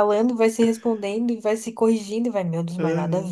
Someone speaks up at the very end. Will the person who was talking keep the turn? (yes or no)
yes